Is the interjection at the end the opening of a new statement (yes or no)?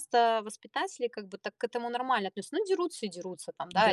no